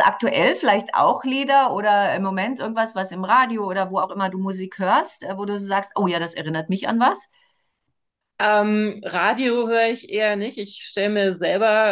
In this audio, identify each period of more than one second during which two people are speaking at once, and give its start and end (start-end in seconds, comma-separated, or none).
none